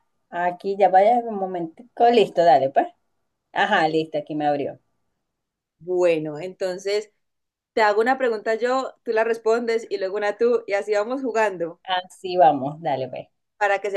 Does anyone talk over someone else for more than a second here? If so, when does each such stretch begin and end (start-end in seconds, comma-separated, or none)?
none